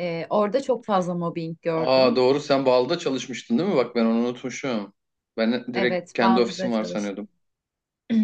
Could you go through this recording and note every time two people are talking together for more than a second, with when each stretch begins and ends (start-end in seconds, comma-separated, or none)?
5.8-7.2